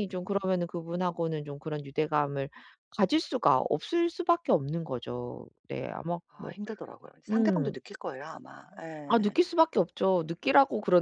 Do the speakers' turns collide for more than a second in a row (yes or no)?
no